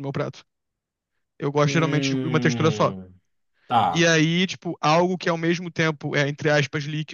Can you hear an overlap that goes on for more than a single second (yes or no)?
yes